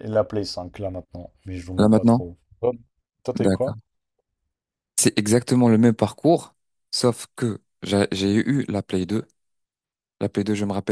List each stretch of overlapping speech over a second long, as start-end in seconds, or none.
none